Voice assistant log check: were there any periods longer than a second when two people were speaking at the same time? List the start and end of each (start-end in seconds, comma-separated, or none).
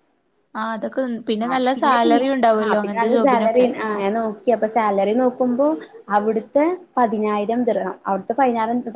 1.5-3.7